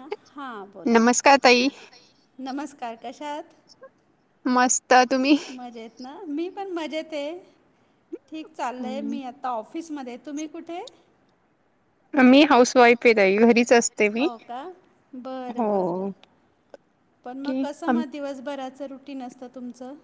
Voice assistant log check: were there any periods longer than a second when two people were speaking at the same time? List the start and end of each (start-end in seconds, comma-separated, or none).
none